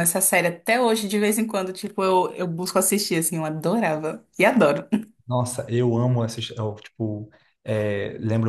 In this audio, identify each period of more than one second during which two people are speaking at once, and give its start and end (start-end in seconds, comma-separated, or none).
none